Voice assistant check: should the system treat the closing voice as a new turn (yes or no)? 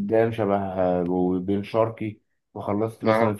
no